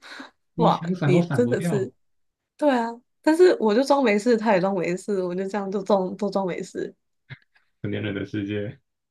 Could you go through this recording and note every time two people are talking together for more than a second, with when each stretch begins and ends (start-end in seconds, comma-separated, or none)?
0.6-1.9